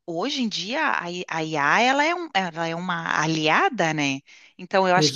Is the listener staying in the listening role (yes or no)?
yes